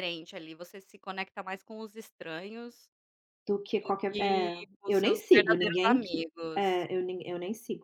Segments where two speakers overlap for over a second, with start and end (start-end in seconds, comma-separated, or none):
3.8-6.9